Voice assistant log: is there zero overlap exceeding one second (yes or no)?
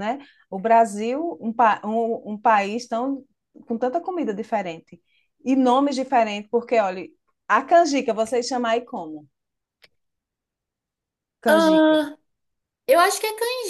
yes